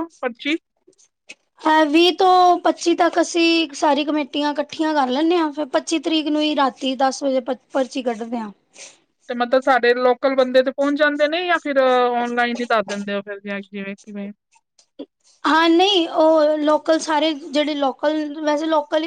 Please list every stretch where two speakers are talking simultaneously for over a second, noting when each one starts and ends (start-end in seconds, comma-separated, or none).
none